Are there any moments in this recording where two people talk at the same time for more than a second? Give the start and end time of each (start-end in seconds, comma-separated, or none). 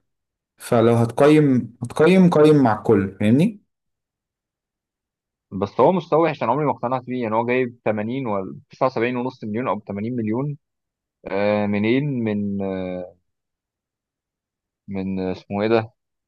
none